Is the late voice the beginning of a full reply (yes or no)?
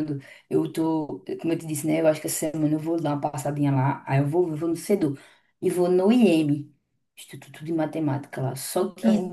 no